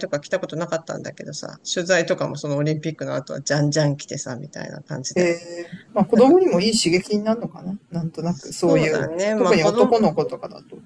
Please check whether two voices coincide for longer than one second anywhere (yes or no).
yes